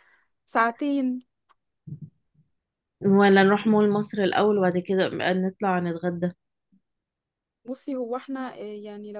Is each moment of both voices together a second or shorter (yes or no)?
yes